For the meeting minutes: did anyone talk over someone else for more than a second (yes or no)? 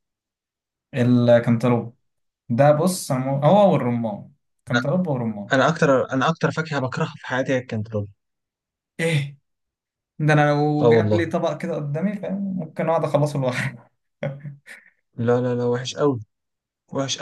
no